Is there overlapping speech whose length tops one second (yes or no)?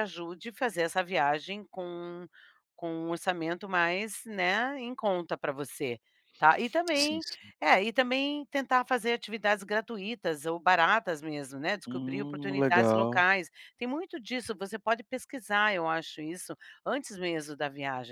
yes